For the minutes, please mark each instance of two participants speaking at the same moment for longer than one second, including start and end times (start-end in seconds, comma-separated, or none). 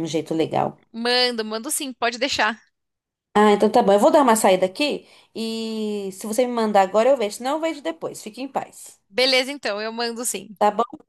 none